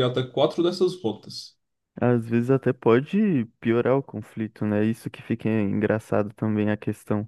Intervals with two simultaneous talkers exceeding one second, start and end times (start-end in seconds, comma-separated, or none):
none